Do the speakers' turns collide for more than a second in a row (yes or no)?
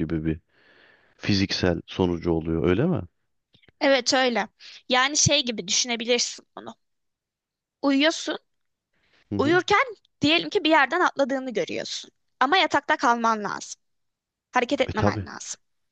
no